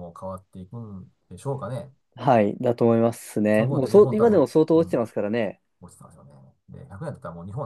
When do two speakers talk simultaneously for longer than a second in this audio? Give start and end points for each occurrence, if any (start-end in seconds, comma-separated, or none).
3.5-5.0